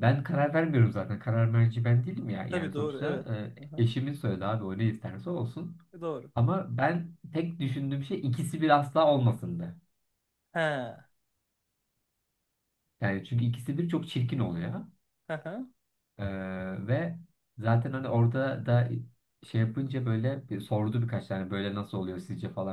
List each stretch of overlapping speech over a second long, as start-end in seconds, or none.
none